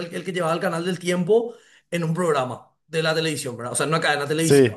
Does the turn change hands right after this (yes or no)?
no